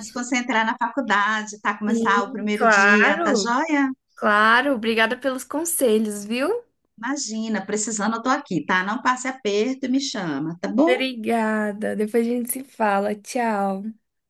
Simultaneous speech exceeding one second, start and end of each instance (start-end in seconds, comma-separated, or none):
1.9-3.5